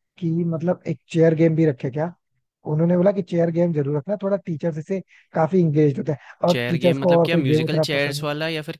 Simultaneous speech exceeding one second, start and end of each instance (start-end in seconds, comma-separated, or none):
6.5-8.3